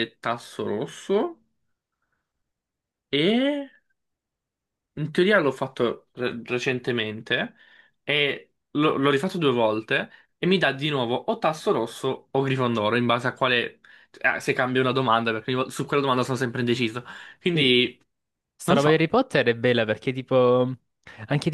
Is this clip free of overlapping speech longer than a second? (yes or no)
yes